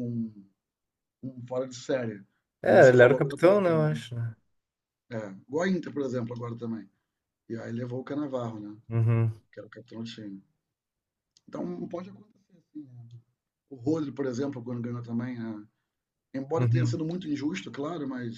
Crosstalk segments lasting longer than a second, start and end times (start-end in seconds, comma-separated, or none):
2.6-4.0